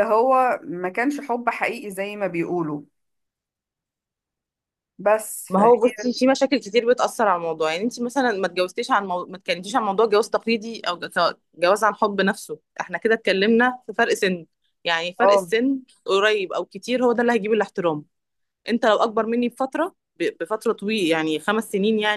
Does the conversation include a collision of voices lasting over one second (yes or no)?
no